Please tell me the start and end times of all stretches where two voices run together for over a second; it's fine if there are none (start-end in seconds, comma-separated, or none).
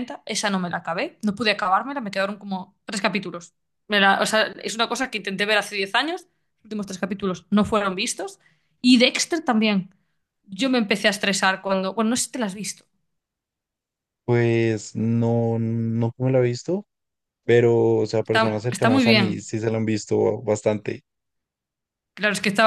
18.2-19.5